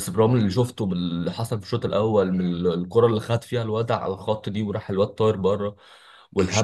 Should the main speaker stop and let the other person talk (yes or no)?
no